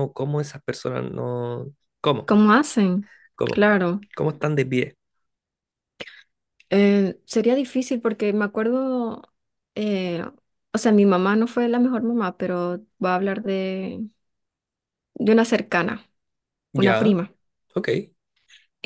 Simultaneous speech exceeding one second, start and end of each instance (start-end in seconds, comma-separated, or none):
none